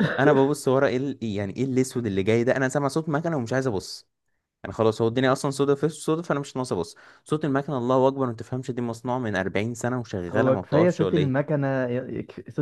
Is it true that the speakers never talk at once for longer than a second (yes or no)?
no